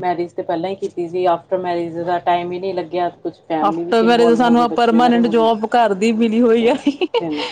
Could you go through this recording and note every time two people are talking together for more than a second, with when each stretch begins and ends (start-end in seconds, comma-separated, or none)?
3.6-5.5